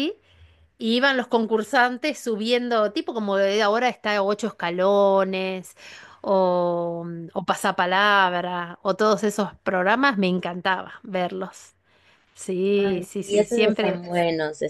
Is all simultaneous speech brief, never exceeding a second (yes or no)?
no